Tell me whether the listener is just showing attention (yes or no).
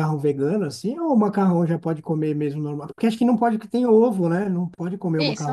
no